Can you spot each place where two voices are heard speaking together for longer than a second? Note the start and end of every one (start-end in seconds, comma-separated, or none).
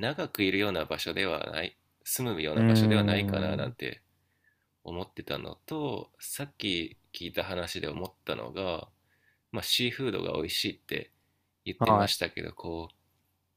2.5-3.8